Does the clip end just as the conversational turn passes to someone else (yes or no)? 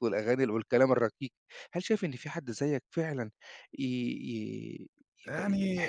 no